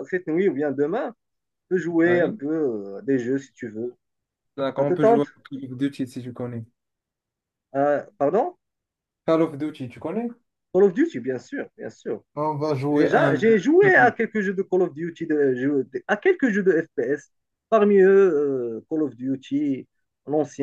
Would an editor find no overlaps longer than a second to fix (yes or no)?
no